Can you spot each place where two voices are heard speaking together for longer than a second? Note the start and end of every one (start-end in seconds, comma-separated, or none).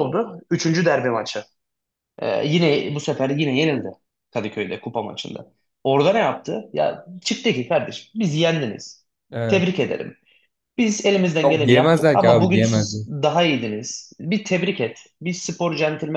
11.4-13.0